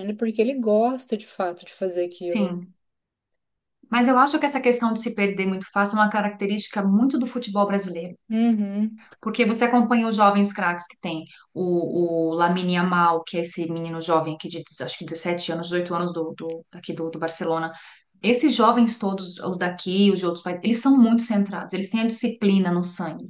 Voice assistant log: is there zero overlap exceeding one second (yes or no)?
yes